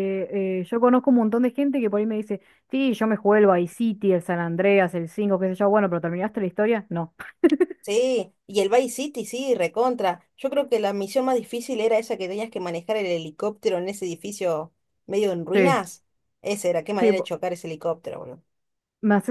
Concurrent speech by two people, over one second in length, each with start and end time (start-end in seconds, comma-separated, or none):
none